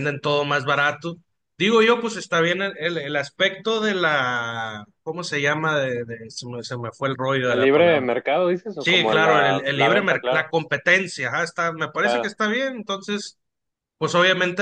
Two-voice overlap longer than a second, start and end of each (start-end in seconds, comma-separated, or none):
8.8-10.5